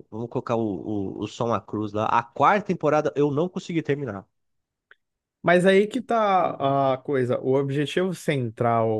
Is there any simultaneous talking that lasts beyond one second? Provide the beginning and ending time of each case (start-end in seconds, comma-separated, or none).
none